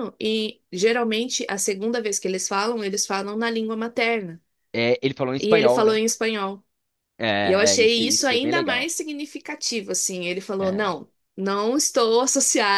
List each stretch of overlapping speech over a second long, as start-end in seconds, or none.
7.4-8.9